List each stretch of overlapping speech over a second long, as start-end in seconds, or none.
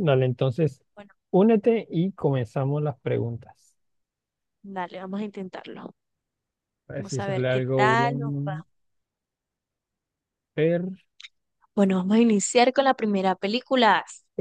7.0-8.6